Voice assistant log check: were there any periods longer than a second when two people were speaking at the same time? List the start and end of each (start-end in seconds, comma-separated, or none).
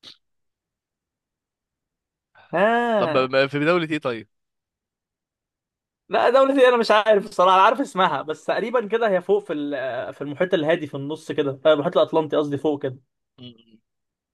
none